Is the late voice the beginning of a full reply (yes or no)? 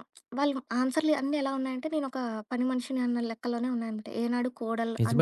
yes